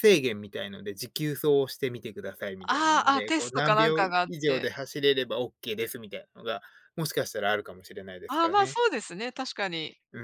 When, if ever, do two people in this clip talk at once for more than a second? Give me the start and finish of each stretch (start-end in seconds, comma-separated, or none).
2.7-4.7